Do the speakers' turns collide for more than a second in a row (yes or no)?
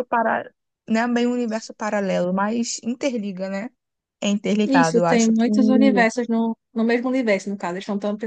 yes